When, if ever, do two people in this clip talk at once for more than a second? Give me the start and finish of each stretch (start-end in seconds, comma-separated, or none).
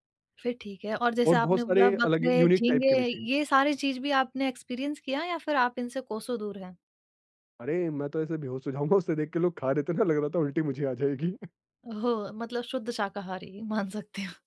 1.3-3.0